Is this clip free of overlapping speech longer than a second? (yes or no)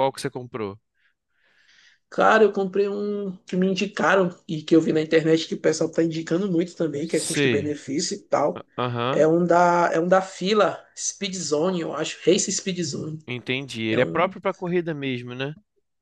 yes